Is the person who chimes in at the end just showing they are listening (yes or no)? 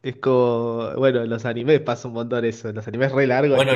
no